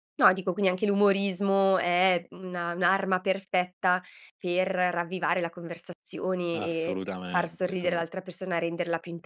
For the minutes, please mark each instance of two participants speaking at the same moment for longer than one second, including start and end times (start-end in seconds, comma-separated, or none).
6.5-8.1